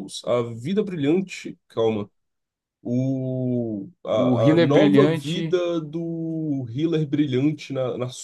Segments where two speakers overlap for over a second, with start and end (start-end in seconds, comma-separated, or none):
4.1-5.6